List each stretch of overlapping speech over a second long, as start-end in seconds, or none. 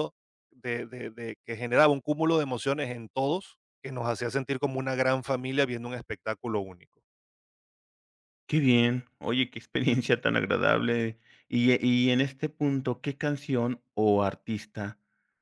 none